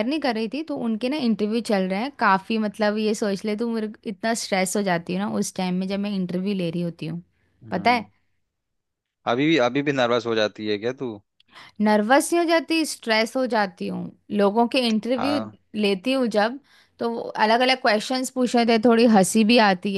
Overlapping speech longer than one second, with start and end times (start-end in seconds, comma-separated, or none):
none